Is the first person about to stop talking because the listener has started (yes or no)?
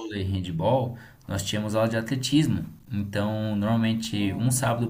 no